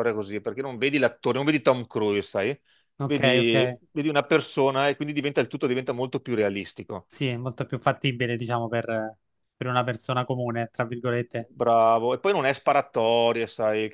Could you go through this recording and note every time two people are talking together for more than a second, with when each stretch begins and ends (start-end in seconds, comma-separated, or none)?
none